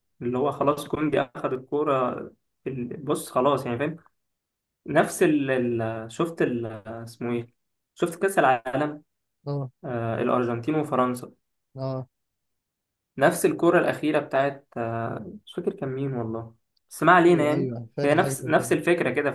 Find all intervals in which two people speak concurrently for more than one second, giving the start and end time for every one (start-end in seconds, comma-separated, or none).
17.3-18.7